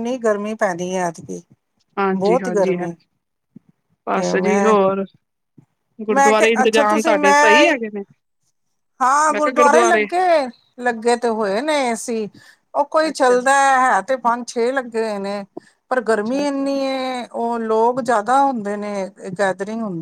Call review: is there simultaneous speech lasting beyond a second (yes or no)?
yes